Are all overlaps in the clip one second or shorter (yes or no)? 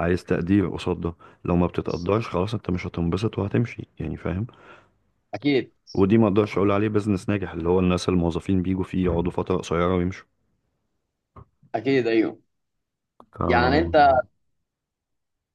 yes